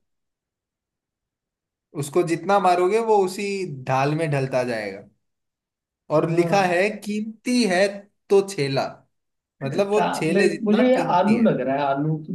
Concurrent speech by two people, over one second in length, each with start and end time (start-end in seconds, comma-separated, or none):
9.6-11.5